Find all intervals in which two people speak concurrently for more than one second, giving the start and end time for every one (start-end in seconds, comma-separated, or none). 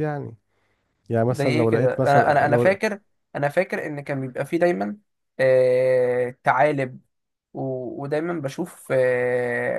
1.3-2.8